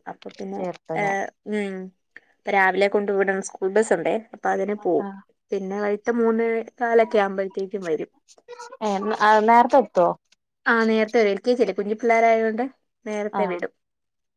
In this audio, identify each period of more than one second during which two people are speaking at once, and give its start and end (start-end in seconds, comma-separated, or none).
none